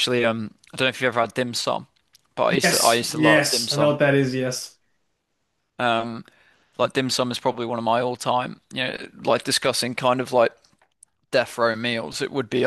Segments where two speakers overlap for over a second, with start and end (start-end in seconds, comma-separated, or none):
2.6-4.0